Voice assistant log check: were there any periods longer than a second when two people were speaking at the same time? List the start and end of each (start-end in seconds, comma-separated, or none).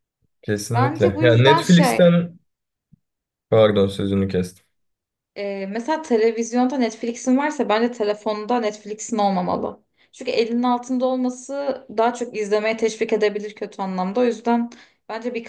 0.7-2.2